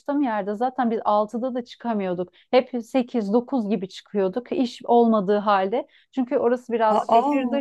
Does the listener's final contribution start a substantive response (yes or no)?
no